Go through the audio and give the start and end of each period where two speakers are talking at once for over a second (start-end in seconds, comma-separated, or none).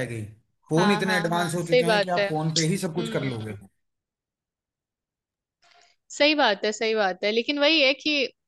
0.8-2.3